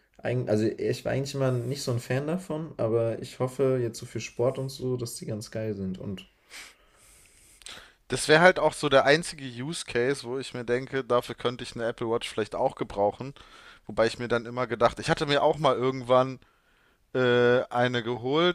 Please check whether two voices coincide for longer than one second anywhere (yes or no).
no